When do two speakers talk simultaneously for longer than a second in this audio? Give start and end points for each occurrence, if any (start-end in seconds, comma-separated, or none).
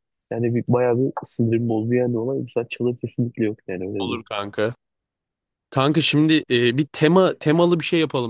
none